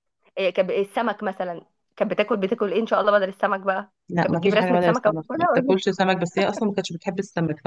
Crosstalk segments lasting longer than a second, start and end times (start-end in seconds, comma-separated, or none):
4.1-5.8